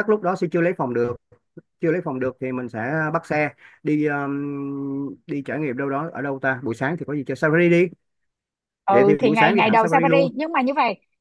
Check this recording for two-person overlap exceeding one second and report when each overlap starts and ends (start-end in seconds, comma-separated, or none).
8.9-10.3